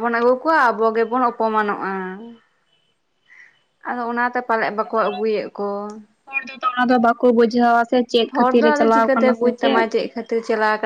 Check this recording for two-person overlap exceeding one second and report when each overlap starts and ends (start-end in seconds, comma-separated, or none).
none